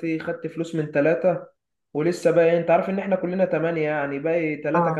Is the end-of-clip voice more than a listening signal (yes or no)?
no